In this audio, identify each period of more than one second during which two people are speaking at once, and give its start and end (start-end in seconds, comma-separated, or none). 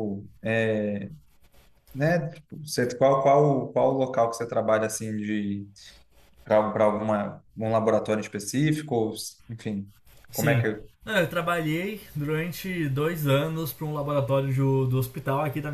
none